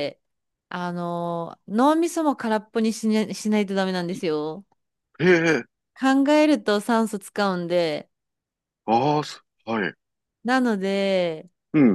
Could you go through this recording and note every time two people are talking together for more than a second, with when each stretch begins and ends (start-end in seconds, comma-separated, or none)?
none